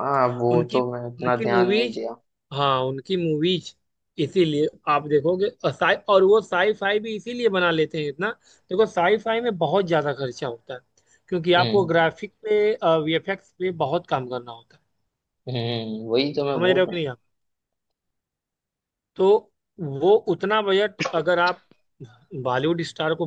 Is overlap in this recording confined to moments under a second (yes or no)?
no